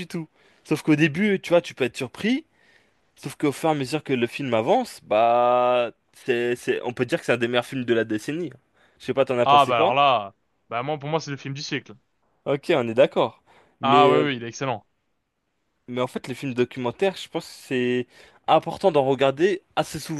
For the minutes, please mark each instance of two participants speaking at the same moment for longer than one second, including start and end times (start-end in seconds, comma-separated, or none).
none